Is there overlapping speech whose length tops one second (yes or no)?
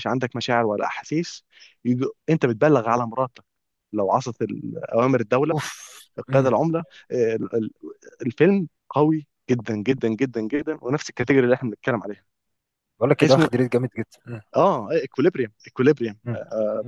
no